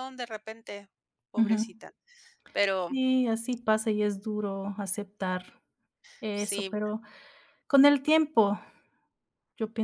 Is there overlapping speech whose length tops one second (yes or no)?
no